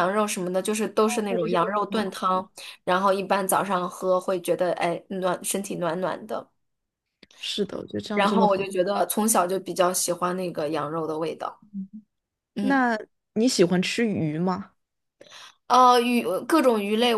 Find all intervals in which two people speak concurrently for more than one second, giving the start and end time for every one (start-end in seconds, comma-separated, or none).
1.1-2.5